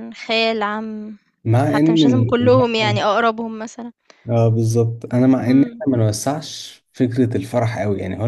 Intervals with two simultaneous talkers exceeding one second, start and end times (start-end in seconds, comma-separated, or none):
1.6-3.0